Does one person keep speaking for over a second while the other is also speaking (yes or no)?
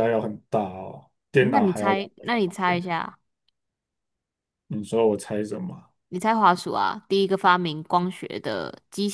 yes